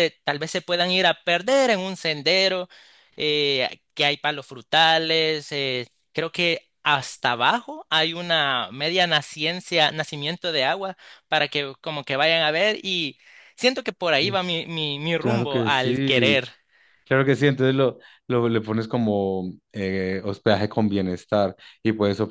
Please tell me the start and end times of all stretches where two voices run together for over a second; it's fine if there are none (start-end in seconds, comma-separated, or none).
15.2-16.4